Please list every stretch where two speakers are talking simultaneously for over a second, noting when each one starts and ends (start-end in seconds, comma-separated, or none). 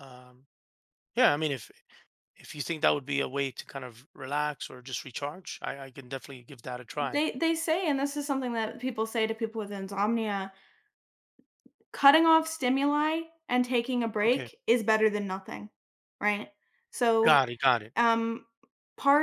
none